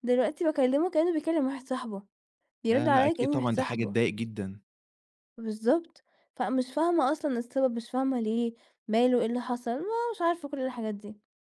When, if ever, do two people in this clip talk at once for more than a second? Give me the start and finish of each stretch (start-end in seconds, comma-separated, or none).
2.7-4.0